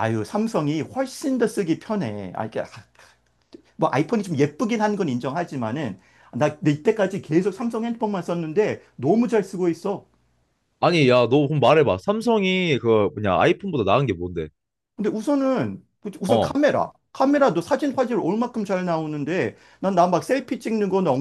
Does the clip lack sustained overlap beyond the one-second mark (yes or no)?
yes